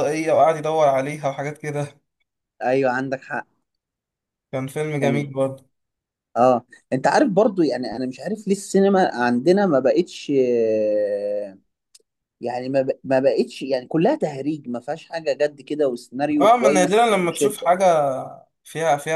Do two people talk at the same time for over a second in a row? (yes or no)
yes